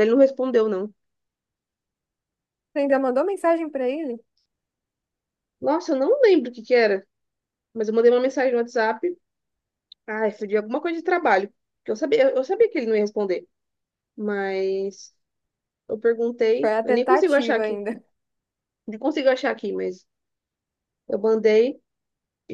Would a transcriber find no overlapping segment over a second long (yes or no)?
no